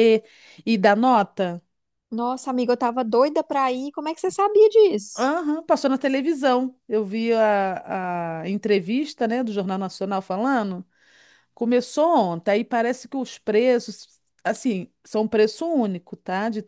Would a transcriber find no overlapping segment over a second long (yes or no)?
yes